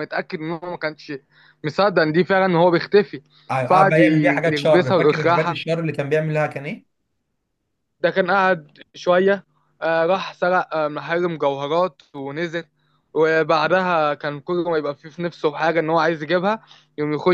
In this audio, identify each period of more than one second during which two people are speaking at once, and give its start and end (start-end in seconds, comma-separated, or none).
3.6-5.6